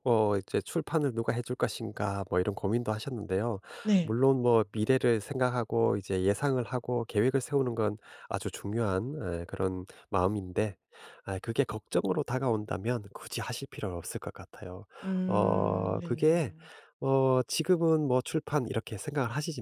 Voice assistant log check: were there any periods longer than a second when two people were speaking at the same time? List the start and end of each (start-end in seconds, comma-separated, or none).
15.2-16.5